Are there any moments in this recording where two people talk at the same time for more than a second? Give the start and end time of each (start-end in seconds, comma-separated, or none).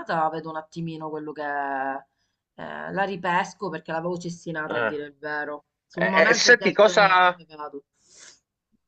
6.0-7.4